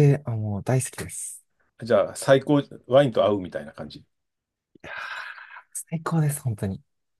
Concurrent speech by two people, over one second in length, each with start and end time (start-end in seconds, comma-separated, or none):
none